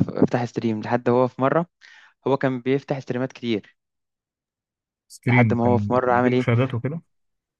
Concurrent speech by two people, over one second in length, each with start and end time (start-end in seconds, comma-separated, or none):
5.3-6.5